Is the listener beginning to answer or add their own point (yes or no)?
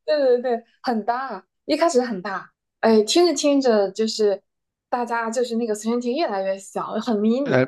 yes